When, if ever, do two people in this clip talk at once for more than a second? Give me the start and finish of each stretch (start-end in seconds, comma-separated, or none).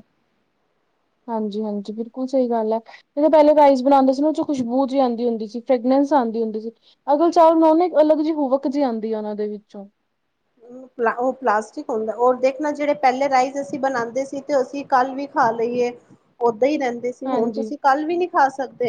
none